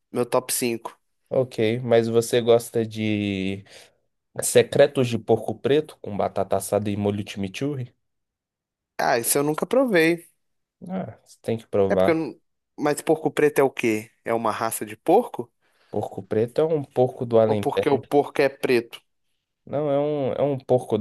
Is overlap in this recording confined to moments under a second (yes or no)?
yes